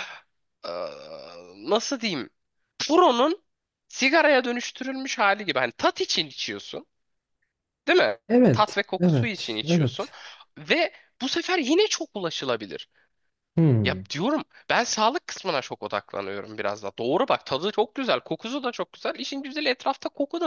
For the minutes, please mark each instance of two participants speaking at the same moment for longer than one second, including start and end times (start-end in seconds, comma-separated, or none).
8.3-10.1